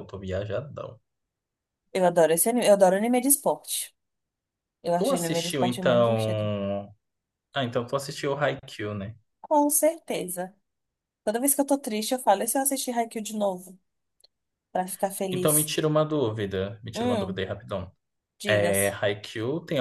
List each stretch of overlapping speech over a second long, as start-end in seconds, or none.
5.0-6.5